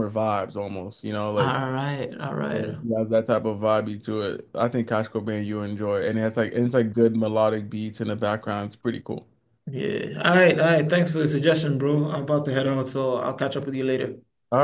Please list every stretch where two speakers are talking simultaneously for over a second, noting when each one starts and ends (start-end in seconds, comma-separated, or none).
none